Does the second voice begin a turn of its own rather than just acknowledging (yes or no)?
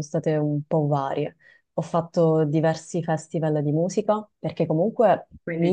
no